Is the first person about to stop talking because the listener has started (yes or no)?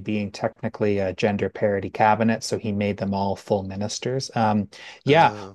no